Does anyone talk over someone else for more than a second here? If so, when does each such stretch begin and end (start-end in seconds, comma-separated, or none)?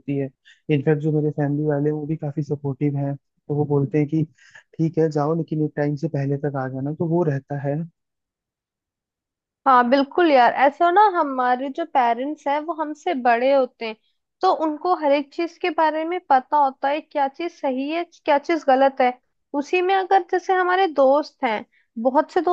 none